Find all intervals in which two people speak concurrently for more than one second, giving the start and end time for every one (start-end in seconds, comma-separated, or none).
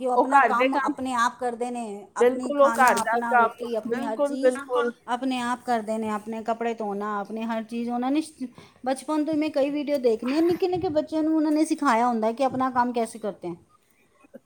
2.2-4.4